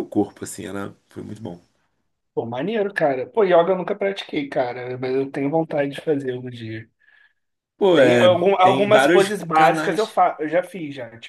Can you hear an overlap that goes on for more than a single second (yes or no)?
yes